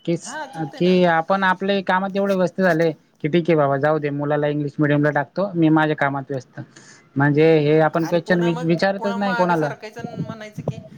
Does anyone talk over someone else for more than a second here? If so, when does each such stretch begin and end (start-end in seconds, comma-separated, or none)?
7.6-9.7